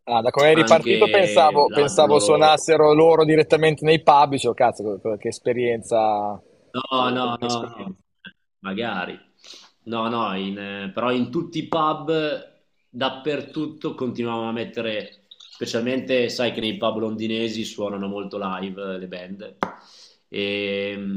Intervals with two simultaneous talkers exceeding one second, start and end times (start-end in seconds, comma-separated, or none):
0.5-2.5